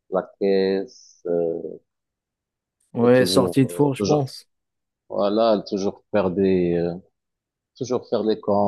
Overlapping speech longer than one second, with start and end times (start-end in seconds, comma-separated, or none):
3.0-4.3